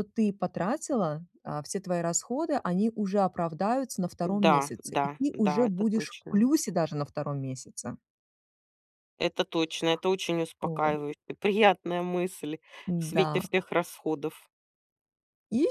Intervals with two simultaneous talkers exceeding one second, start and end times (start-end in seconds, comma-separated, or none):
4.2-6.5